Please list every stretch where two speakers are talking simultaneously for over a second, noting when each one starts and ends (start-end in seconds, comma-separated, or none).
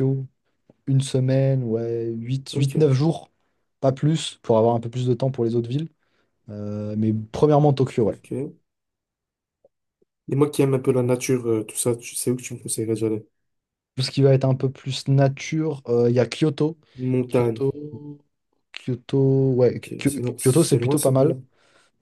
19.7-21.4